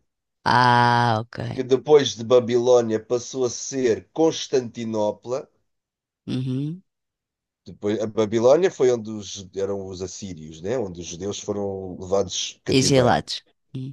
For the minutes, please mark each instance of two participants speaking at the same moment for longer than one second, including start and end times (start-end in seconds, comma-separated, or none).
none